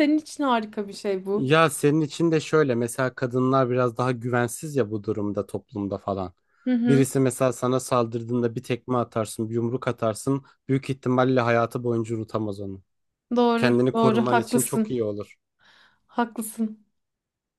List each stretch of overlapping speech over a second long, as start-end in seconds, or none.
13.6-14.9